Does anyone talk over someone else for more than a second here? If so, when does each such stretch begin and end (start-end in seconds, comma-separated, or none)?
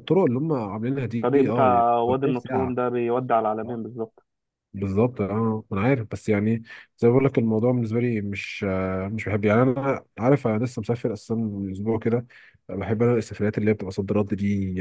1.2-2.8